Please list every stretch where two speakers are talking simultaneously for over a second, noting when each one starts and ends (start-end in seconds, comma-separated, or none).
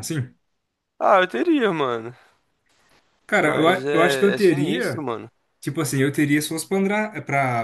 3.4-5.1